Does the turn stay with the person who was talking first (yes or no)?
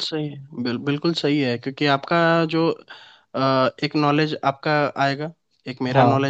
yes